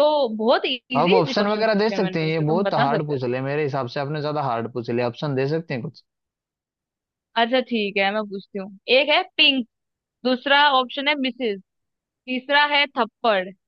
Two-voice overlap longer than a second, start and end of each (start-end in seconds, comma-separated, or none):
1.0-3.2